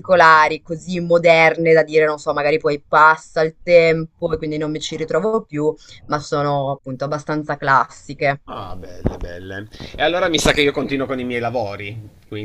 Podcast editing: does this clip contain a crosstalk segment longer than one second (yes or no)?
no